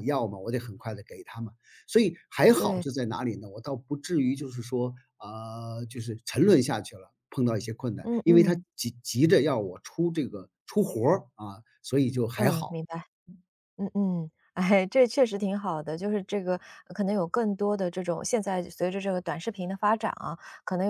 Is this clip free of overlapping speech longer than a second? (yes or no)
yes